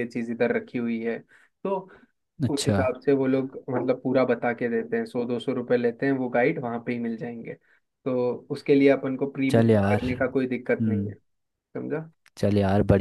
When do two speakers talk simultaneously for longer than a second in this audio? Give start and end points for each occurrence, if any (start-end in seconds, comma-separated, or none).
none